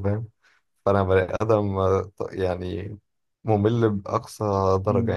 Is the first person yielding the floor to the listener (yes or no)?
yes